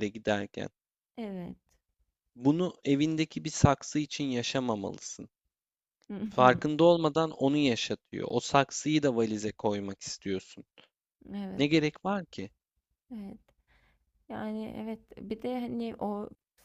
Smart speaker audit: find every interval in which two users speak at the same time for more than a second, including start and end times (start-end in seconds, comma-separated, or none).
none